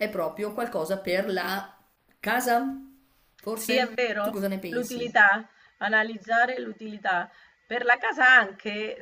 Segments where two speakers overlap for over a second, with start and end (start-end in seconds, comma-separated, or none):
3.5-5.2